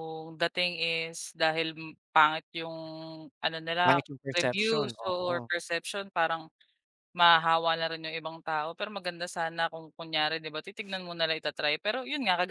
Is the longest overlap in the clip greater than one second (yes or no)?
yes